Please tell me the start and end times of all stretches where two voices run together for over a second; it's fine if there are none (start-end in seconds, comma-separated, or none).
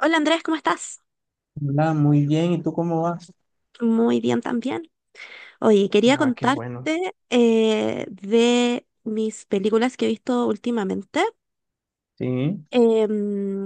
none